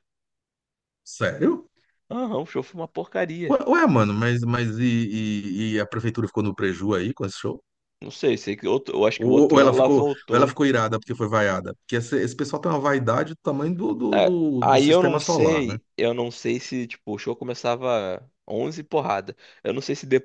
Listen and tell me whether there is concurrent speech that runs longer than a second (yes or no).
yes